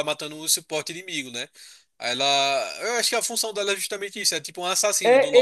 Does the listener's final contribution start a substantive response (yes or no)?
yes